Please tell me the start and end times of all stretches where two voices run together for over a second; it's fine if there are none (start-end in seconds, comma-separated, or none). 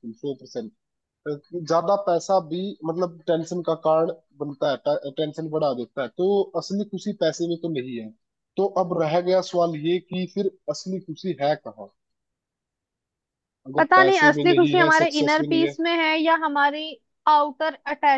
13.8-15.7